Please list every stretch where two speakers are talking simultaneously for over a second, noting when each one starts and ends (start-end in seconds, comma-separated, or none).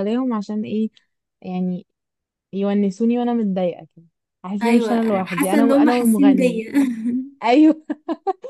4.6-6.7